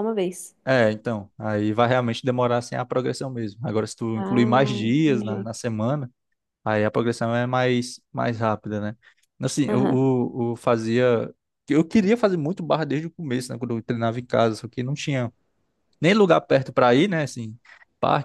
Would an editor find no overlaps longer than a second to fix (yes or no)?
no